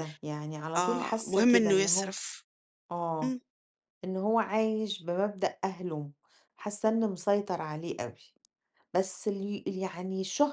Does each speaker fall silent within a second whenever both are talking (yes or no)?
no